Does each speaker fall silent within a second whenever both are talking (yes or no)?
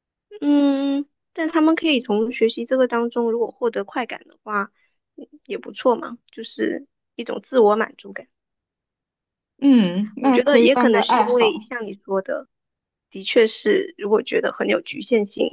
no